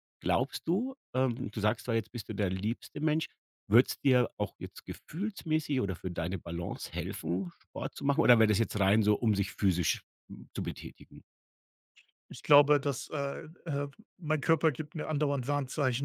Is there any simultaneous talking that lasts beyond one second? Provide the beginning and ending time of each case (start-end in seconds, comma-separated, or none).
none